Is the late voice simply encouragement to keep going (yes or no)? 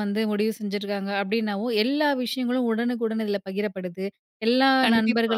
yes